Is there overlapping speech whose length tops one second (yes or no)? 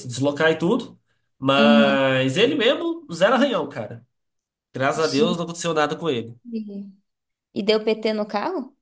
no